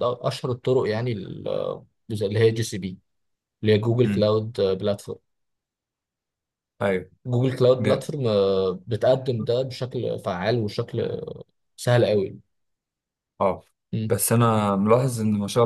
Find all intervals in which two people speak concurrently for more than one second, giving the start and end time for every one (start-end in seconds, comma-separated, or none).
none